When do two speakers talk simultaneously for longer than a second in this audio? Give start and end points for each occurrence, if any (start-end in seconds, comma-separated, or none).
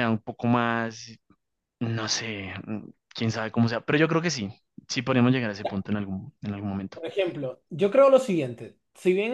none